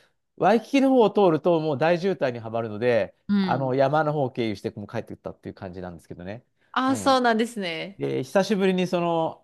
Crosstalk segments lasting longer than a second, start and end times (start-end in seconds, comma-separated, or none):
none